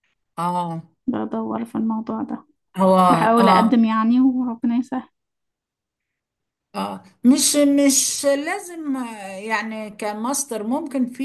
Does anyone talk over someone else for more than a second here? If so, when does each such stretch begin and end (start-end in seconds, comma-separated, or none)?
none